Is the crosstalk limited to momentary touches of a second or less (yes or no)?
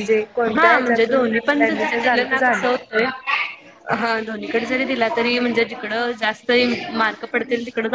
yes